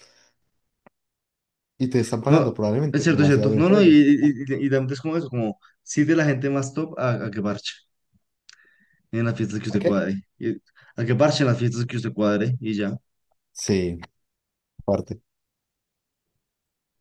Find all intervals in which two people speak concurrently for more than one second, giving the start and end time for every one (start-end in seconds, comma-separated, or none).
2.3-4.4